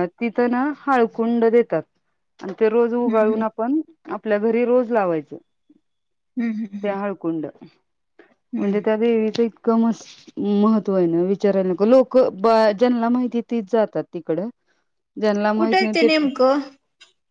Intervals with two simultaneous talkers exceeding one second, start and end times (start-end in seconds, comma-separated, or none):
none